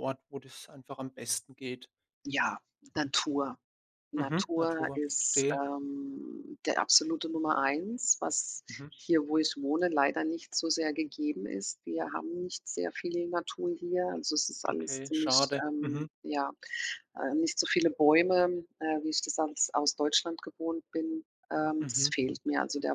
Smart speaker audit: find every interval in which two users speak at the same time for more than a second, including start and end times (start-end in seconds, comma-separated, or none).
4.2-5.6, 14.7-16.1